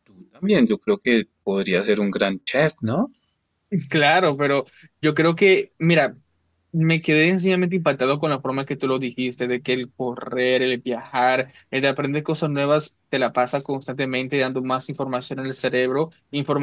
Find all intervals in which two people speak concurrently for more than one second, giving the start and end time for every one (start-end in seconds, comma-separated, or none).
none